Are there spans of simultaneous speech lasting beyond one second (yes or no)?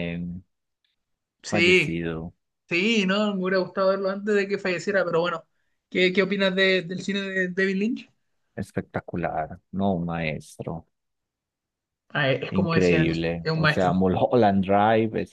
yes